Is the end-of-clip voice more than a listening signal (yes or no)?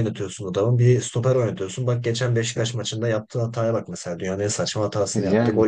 no